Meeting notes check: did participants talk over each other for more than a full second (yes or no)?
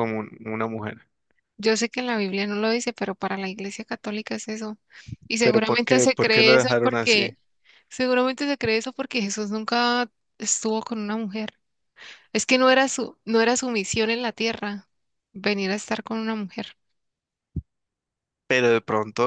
yes